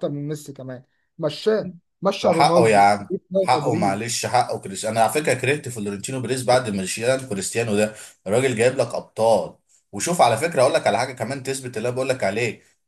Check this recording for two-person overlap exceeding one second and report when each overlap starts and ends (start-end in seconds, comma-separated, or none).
2.2-4.1